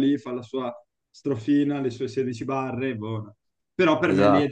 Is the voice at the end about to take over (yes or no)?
no